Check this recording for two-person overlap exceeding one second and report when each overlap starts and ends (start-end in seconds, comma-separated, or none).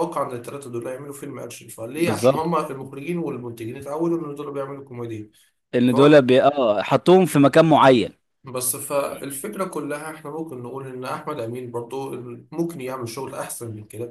none